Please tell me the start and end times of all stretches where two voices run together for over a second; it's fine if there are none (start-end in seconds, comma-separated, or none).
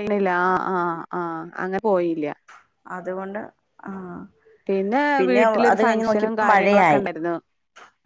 5.7-7.0